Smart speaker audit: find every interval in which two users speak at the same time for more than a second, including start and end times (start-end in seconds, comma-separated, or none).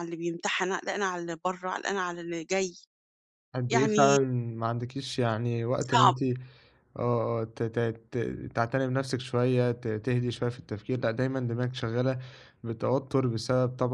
none